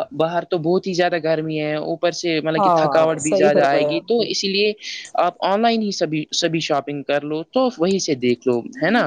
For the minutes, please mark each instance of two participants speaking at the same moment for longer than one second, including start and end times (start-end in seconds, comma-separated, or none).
2.6-4.2